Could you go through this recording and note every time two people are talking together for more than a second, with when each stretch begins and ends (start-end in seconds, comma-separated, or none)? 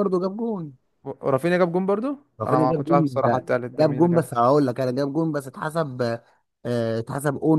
2.4-4.3